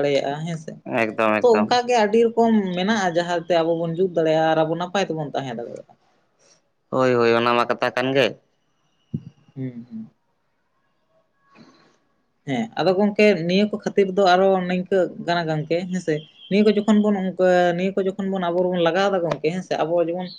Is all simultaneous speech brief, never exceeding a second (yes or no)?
yes